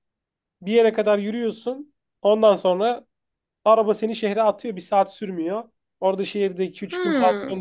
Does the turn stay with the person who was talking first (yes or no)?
yes